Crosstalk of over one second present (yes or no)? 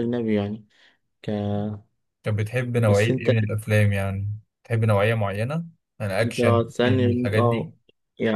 yes